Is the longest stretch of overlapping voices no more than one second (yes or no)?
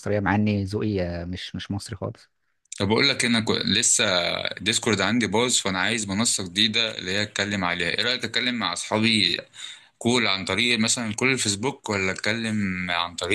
yes